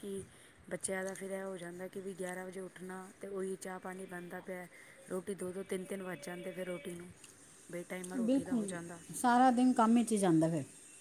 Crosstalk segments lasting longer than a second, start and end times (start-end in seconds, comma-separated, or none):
none